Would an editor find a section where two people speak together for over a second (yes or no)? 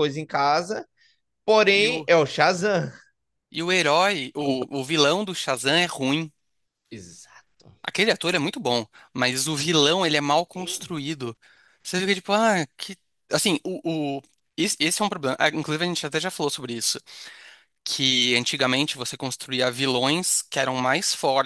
no